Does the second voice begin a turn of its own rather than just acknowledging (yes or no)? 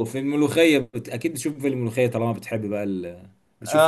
yes